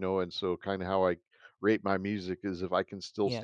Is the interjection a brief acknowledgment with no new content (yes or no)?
yes